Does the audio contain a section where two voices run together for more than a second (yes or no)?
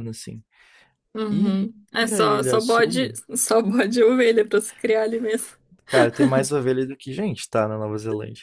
yes